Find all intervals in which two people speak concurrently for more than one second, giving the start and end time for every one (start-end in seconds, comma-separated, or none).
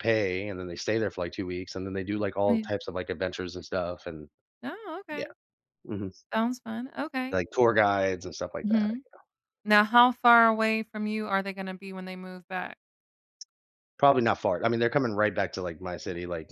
none